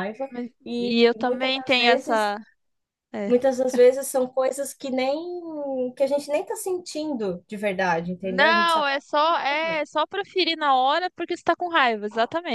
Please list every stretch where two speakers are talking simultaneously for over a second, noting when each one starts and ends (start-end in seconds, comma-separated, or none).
0.7-2.3, 8.2-9.8